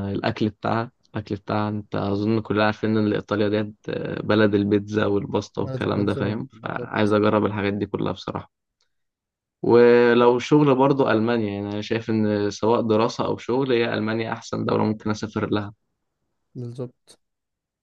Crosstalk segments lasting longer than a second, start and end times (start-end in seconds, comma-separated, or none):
5.5-6.9